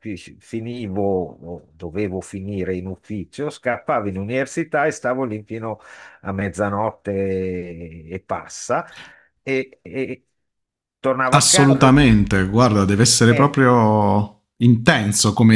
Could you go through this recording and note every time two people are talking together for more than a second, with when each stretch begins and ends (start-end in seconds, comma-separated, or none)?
none